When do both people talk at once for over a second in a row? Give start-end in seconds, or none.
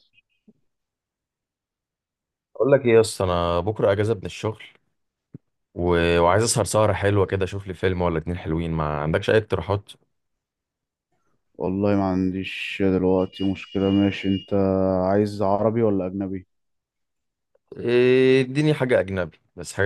none